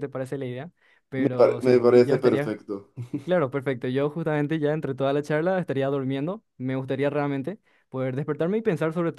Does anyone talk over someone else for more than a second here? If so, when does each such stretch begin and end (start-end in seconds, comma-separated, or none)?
1.1-2.5